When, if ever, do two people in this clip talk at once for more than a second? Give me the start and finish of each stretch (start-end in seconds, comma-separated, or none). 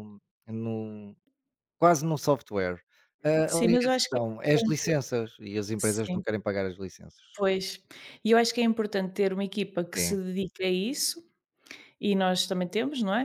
3.5-4.9